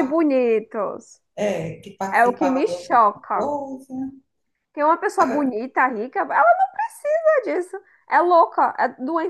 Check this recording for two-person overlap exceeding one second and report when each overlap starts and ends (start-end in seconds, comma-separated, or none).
2.1-3.5